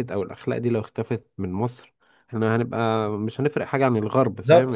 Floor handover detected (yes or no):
yes